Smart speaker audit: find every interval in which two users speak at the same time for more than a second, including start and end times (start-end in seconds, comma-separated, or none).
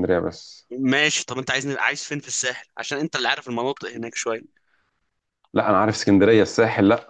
none